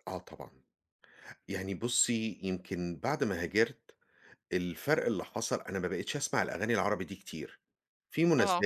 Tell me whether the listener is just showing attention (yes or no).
yes